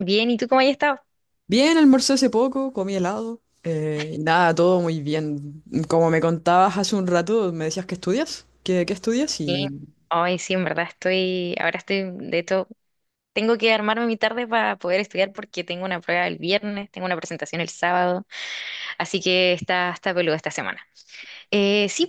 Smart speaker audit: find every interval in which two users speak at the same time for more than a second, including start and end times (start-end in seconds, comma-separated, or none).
none